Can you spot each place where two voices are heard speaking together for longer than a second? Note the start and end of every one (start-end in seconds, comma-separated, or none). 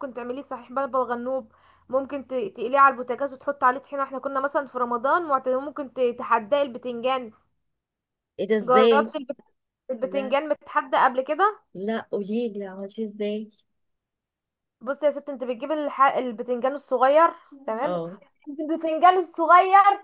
none